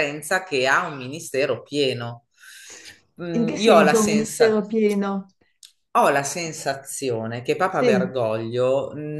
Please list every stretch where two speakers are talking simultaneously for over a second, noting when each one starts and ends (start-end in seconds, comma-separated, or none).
3.3-4.6